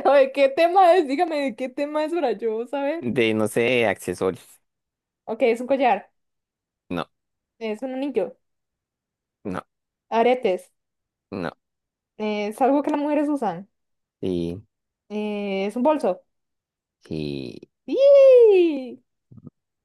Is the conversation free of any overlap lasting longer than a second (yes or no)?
yes